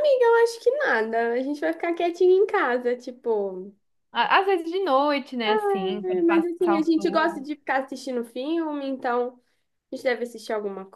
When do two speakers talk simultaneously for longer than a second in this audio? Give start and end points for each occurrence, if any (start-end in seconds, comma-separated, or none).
6.0-7.5